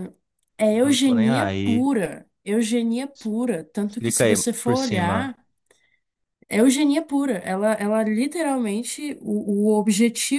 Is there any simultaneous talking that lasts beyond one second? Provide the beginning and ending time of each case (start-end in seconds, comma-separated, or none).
0.7-1.9, 4.0-5.3